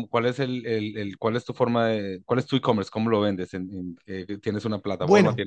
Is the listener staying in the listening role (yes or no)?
no